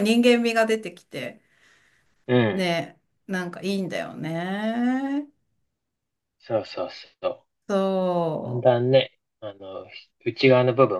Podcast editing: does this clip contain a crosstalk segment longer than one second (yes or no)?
no